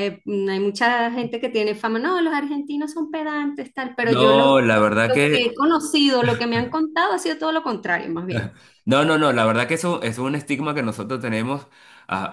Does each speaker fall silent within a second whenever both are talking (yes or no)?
no